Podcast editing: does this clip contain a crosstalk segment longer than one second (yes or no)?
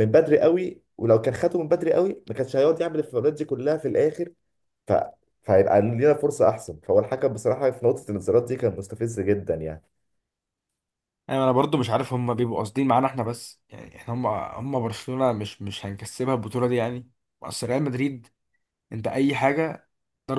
no